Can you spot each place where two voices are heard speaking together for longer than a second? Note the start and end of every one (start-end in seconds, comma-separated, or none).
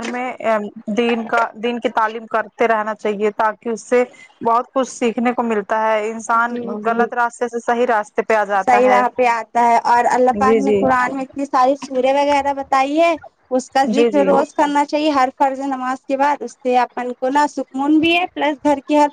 none